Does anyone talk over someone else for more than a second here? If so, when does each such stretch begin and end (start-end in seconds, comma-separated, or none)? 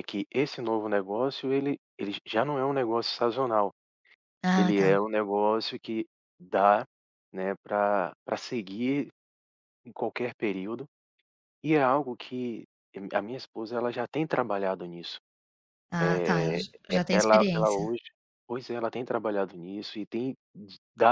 16.0-17.9